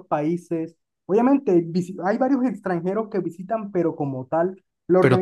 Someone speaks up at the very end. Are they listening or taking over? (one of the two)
taking over